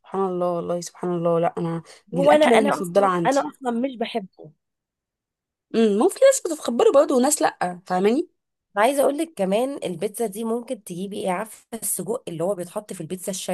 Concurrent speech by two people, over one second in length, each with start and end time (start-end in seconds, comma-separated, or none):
2.1-3.4